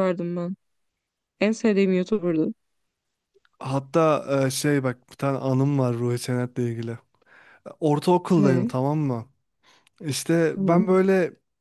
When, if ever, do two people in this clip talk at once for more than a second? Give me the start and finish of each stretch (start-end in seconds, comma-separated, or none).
none